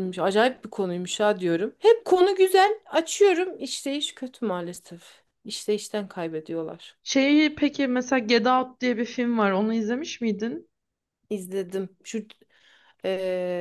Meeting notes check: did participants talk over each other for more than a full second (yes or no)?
no